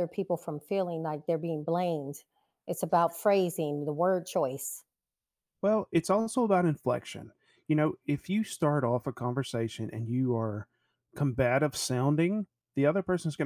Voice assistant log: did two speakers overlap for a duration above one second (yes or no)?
no